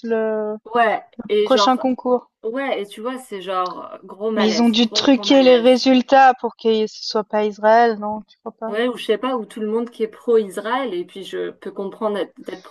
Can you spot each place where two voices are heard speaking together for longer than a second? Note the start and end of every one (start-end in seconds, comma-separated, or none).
4.4-5.7